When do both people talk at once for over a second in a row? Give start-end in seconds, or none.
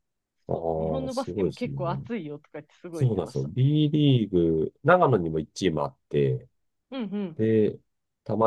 0.5-1.7